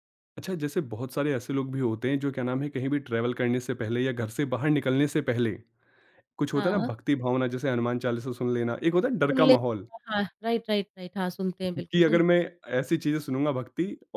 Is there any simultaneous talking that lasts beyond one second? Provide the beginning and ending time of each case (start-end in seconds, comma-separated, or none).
none